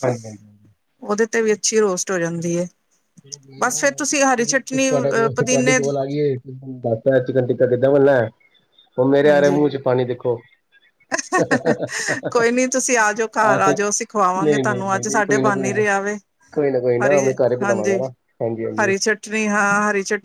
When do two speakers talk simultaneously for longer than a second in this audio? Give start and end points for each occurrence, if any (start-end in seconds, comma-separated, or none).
4.4-5.9, 14.4-15.8